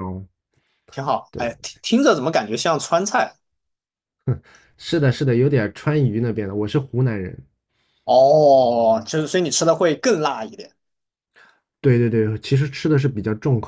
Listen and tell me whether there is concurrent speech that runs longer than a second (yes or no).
no